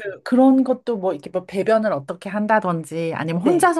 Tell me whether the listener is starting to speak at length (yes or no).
no